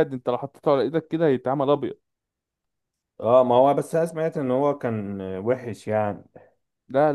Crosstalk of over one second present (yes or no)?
no